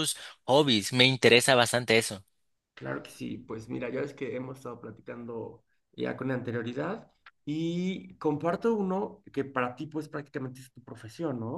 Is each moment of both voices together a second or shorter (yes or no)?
yes